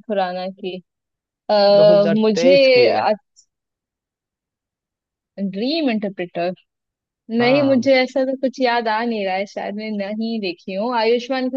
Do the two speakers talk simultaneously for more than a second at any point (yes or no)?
no